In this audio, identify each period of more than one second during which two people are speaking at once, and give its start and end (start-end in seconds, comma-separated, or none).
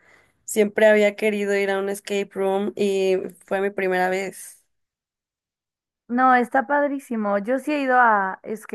none